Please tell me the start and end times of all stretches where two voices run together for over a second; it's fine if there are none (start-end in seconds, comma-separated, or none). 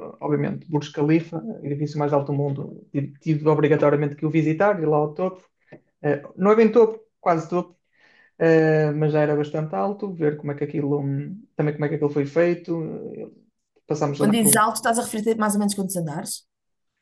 none